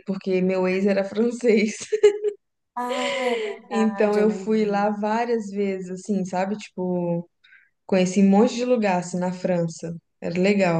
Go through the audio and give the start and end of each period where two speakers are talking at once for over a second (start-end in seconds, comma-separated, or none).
3.7-4.9